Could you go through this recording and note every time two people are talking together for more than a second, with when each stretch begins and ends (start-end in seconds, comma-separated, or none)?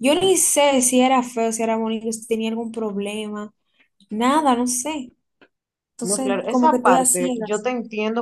6.1-7.6